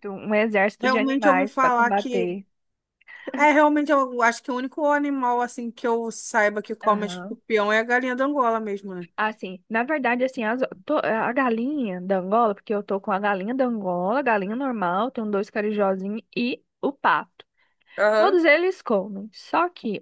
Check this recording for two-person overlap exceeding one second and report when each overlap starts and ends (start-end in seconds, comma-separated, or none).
0.8-2.3